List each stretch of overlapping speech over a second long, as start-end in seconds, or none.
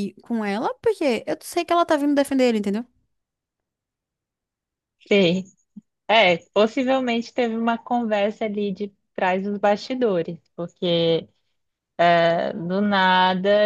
none